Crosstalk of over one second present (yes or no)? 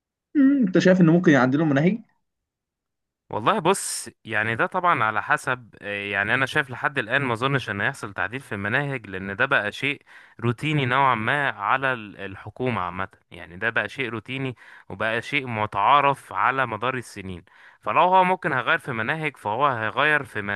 no